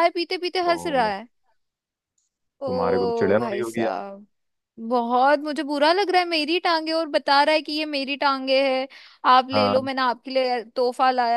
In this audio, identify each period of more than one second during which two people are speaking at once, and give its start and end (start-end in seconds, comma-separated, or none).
2.7-4.0